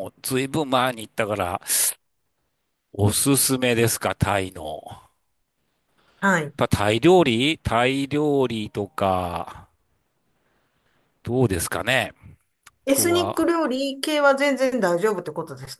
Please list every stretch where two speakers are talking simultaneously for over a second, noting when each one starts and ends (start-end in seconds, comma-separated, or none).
none